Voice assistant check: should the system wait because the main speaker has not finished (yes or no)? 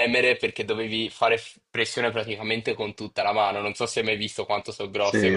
no